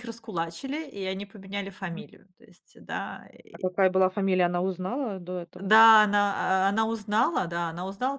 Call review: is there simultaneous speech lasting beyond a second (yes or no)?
no